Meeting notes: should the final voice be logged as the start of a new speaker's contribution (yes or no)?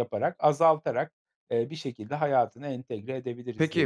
yes